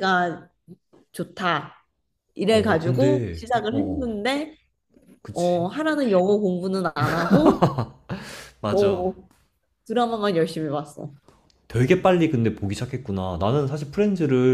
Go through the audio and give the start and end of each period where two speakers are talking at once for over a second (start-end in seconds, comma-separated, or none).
2.5-4.2